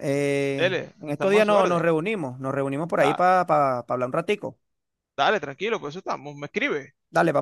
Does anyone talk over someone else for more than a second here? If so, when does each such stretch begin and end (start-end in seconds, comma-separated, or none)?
0.6-2.0